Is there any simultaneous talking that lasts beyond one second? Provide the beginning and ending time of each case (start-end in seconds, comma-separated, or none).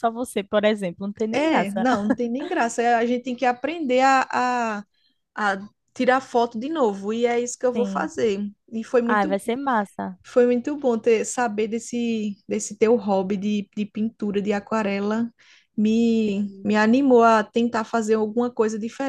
none